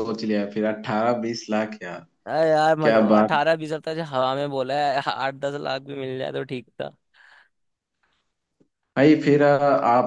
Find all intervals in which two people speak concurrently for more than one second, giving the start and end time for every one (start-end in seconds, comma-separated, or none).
none